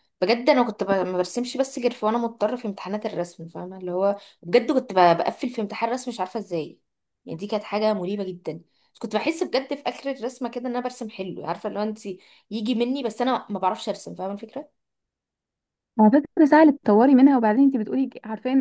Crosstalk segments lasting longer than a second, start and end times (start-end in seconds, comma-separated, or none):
none